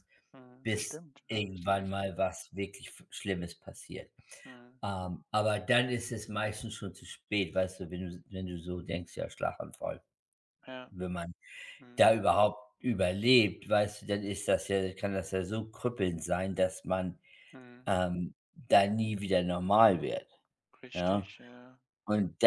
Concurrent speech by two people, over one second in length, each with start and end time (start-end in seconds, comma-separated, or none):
0.6-2.0